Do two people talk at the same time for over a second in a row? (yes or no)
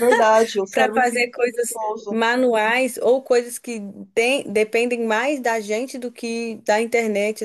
yes